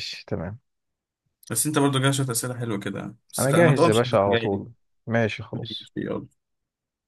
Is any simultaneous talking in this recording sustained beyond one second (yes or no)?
yes